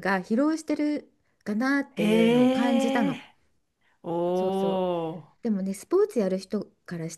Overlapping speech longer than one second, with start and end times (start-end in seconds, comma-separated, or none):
2.0-3.2